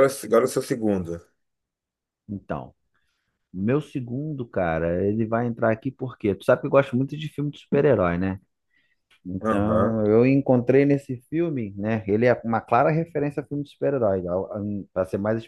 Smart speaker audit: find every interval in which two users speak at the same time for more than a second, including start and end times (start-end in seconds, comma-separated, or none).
none